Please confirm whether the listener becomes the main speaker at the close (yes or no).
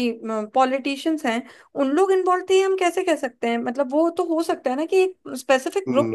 yes